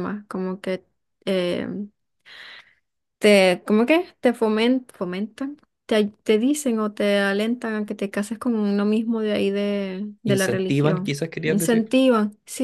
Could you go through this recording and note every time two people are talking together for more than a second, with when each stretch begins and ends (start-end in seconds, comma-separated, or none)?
10.2-11.9